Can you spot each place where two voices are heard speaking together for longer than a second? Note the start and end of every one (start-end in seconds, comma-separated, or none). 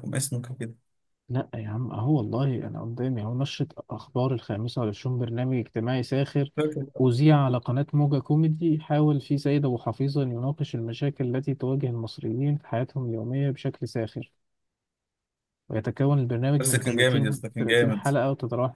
16.6-18.1